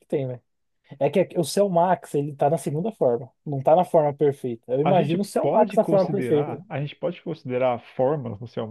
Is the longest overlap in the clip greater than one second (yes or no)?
yes